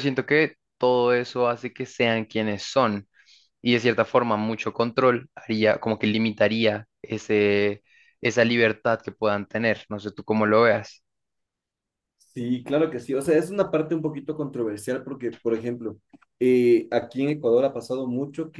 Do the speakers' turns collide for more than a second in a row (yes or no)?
no